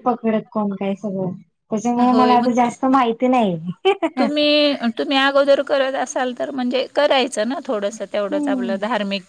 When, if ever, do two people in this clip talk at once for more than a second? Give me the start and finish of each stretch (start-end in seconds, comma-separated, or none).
none